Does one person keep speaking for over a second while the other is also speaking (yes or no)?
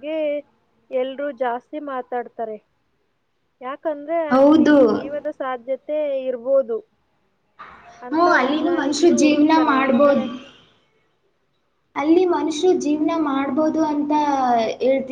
yes